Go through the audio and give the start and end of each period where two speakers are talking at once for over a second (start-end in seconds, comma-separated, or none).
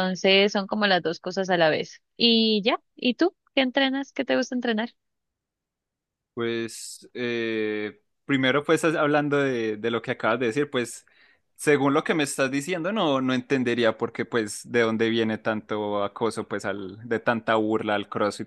none